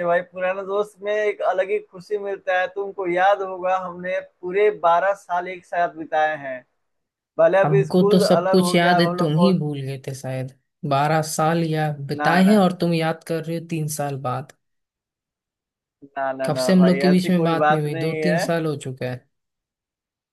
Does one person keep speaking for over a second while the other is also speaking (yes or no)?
yes